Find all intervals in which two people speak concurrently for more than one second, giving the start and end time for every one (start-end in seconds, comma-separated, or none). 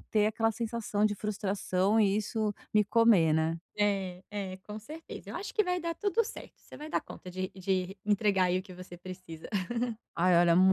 none